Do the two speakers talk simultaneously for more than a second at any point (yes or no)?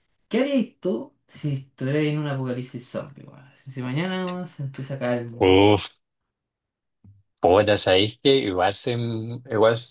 no